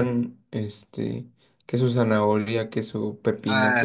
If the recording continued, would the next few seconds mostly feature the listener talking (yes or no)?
yes